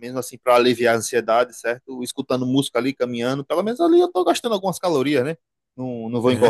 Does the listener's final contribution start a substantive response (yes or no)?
yes